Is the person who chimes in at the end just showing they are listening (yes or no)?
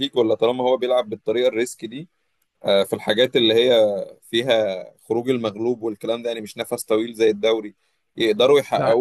yes